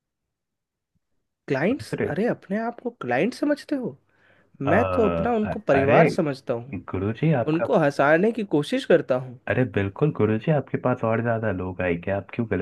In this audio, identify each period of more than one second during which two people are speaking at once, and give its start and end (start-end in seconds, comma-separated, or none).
none